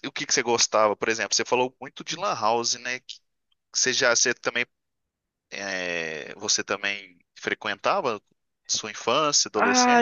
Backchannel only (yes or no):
no